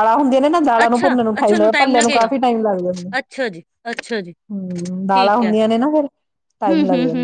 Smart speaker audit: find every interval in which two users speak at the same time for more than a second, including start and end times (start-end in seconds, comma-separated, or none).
0.8-2.3